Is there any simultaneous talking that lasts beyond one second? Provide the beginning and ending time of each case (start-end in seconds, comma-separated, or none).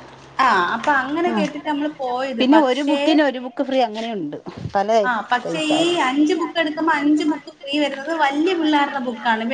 none